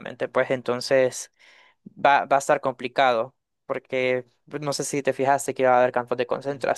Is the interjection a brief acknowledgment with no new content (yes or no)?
no